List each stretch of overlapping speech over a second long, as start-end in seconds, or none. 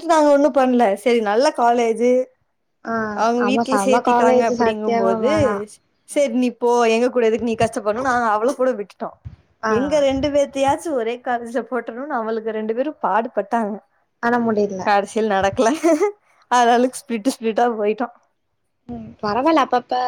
3.5-5.3